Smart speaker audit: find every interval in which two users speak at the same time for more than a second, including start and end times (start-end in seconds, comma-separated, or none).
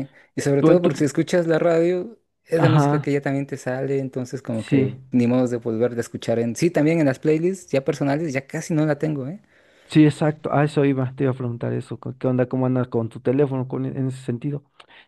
none